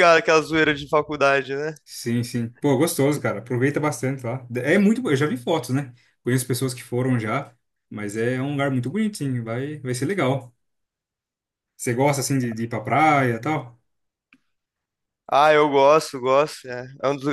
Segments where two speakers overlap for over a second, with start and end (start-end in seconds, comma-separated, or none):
none